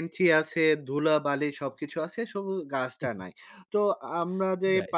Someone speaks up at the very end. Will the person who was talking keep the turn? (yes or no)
yes